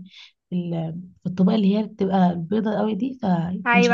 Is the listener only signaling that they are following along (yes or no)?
no